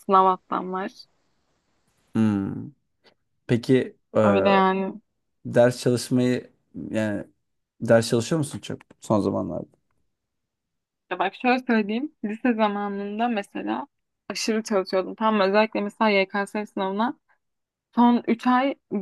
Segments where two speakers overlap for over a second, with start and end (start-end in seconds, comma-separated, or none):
none